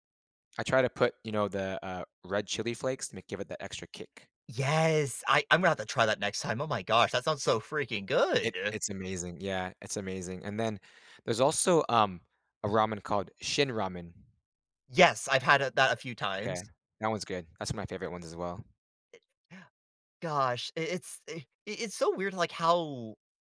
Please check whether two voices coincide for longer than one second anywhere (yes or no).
no